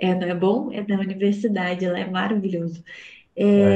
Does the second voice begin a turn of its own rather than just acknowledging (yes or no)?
no